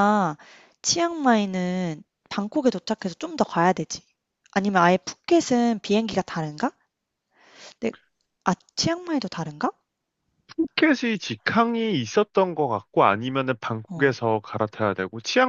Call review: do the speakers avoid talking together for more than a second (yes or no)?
yes